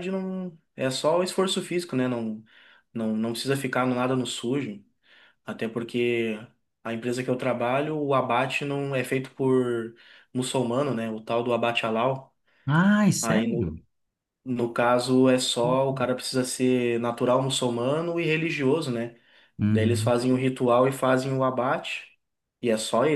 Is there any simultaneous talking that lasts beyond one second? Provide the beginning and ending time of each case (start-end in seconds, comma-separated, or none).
none